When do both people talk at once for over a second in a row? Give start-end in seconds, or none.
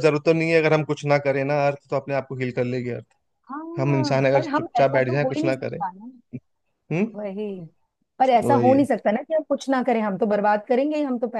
3.8-5.8